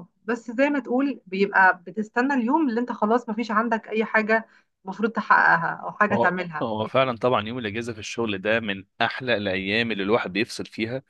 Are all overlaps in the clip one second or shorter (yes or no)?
yes